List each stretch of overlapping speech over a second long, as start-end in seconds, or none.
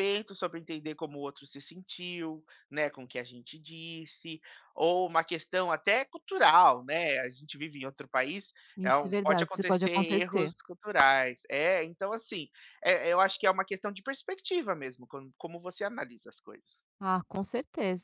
8.8-10.5